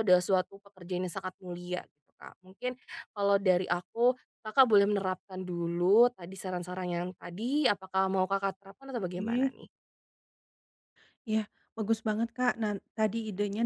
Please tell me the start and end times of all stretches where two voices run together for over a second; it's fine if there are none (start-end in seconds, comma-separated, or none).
none